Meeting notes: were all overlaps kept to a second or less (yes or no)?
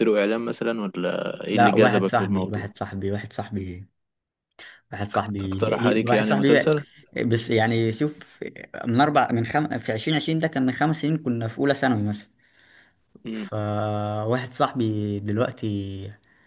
no